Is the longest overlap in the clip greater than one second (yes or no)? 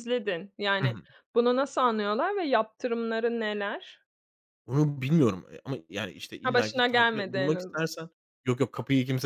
yes